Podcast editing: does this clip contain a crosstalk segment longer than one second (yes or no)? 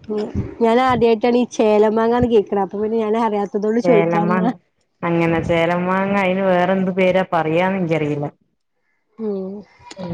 no